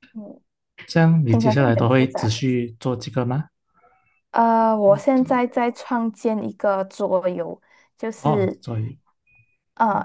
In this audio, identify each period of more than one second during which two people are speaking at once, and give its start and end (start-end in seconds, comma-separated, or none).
1.3-2.5